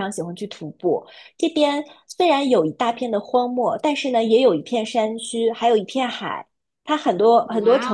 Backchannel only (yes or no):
yes